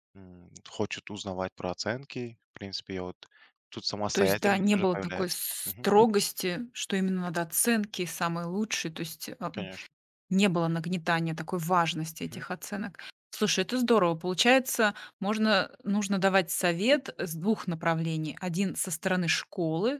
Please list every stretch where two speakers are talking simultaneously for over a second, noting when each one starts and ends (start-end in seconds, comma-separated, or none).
4.1-5.9